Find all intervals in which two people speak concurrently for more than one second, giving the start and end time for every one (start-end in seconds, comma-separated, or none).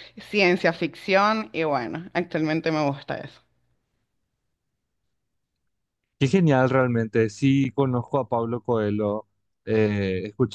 none